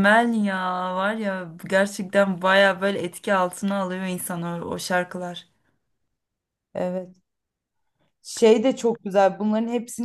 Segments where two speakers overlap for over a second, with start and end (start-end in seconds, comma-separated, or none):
none